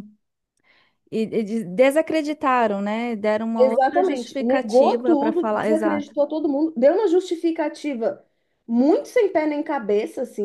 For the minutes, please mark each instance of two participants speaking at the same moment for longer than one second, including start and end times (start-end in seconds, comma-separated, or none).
3.6-6.1